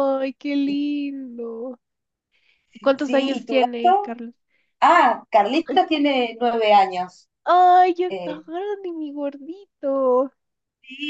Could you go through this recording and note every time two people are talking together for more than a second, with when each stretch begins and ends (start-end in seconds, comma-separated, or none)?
2.8-4.2